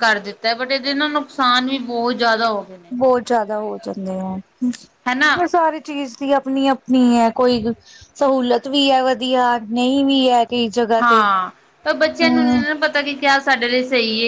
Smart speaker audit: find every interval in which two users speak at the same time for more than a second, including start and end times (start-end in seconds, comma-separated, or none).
none